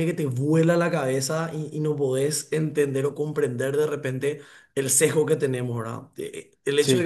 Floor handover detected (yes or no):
no